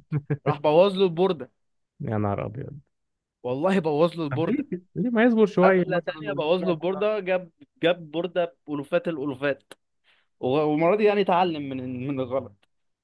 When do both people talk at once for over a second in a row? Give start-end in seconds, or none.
5.6-7.0